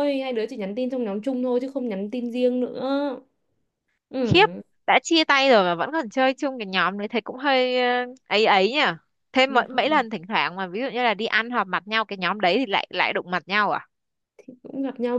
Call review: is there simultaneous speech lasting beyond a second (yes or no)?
no